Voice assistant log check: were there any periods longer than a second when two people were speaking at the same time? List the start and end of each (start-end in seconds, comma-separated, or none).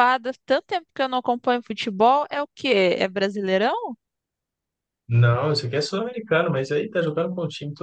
none